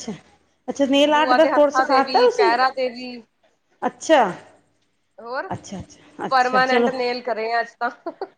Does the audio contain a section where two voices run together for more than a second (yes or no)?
yes